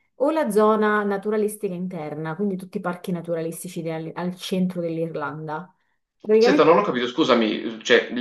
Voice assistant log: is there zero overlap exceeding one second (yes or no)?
yes